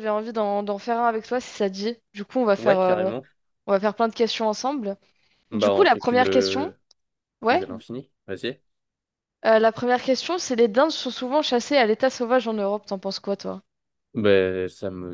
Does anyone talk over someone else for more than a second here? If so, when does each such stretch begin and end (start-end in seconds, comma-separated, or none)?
5.5-6.7